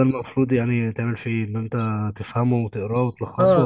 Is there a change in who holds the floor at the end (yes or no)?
yes